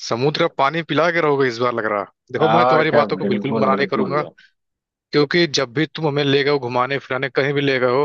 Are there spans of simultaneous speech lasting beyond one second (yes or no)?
yes